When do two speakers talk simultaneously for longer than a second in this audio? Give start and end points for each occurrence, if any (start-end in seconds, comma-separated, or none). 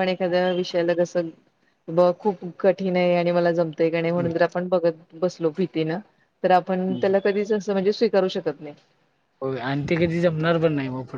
none